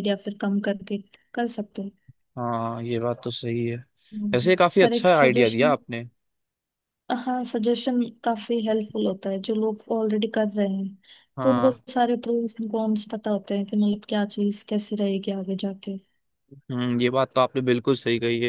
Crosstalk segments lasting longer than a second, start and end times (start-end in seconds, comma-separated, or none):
4.3-5.7